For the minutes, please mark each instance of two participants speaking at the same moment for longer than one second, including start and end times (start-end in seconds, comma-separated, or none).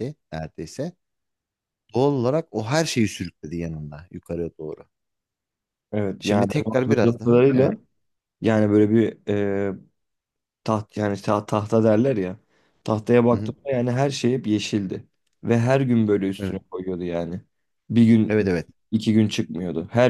6.2-7.7